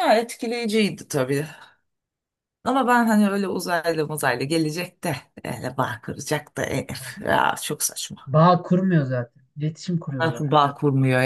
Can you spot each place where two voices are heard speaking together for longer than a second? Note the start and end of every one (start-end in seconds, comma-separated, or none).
none